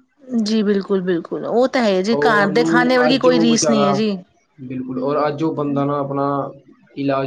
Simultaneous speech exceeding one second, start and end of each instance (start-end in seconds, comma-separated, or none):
2.1-3.9